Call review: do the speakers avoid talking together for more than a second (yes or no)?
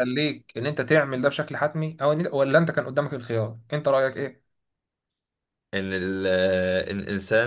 yes